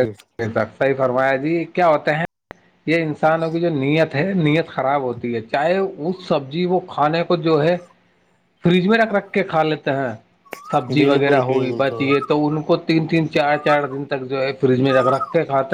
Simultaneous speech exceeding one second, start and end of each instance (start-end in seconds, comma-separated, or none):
11.0-12.3